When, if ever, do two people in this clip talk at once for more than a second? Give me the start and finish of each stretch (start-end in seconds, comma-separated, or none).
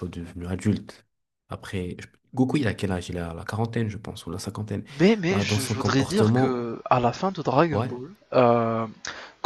5.3-6.7